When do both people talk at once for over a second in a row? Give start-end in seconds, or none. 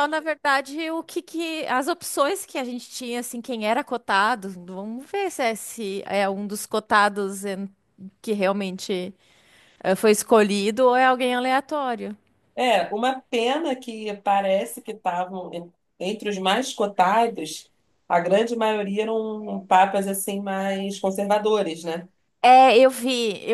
none